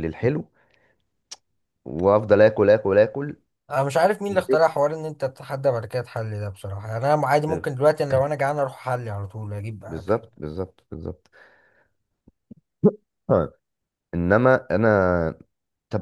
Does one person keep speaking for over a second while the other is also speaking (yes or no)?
no